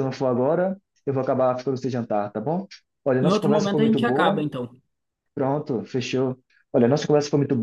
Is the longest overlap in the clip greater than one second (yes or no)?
yes